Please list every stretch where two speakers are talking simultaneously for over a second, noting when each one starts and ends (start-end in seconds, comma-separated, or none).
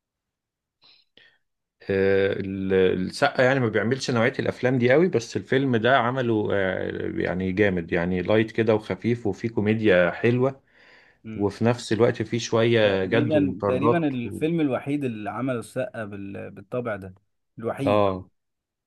12.8-14.4